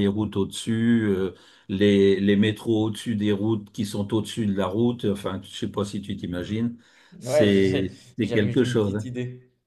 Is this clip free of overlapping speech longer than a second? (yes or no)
no